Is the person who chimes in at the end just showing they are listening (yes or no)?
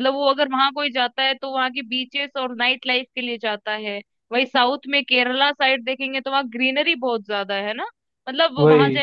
yes